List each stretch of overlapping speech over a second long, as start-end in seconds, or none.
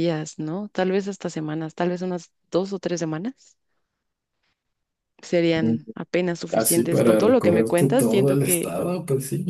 6.5-8.8